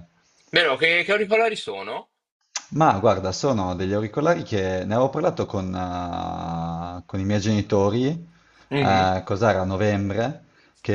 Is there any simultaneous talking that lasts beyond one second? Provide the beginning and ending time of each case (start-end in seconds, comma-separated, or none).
none